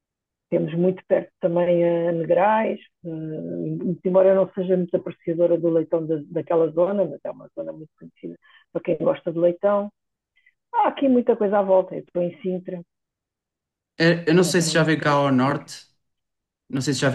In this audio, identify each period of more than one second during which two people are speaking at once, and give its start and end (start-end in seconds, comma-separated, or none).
14.3-15.7